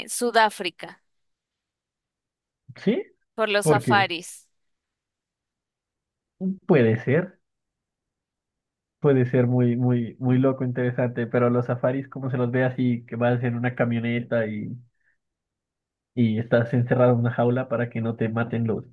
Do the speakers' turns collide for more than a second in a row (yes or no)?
no